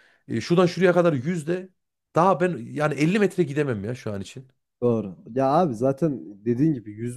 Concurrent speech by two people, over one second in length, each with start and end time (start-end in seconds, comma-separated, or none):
none